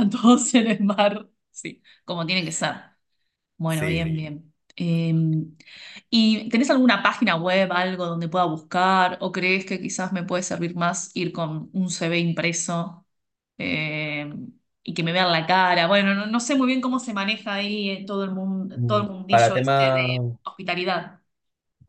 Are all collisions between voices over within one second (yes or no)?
no